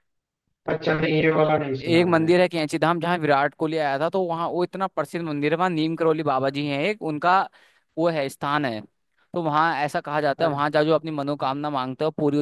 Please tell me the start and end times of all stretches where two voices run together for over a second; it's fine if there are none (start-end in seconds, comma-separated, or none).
none